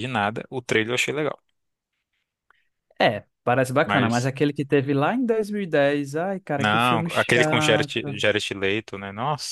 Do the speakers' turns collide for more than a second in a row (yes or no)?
yes